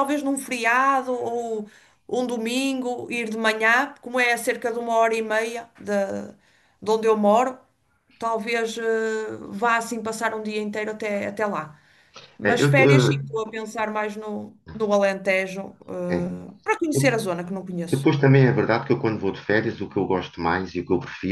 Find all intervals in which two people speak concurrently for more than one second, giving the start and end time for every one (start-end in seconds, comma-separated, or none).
none